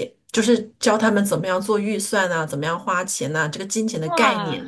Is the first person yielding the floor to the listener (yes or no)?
no